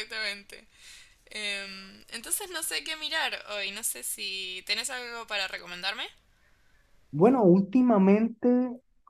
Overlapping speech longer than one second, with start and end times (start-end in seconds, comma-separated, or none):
none